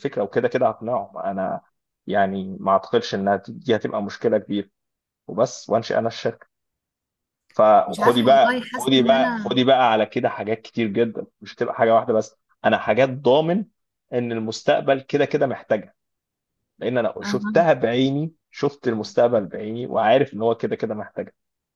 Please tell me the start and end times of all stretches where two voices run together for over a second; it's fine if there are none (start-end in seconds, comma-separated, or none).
7.9-9.6